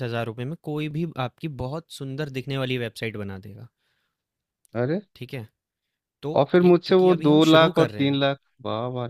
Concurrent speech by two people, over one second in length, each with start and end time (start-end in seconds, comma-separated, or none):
6.3-8.2